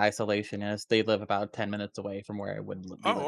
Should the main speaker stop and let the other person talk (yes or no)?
yes